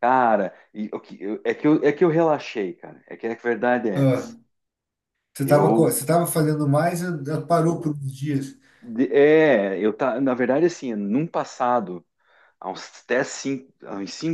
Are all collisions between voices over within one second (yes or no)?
yes